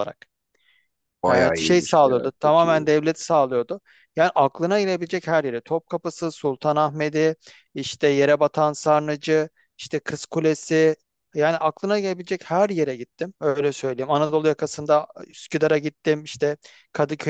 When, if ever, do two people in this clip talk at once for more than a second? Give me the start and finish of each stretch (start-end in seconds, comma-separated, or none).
1.3-2.9